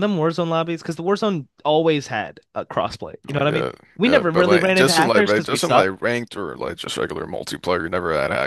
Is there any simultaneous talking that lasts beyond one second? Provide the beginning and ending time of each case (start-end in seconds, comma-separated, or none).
3.3-5.9